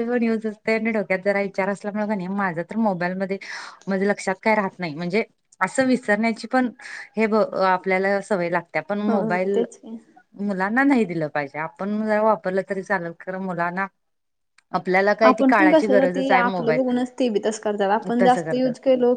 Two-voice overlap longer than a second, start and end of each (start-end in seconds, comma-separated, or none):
15.3-16.8